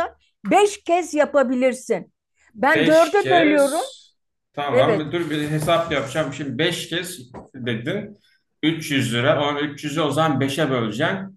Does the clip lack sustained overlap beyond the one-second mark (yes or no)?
no